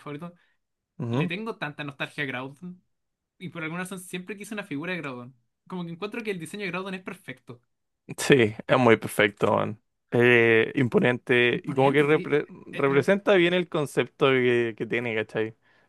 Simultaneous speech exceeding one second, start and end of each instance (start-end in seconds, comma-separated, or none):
11.5-13.1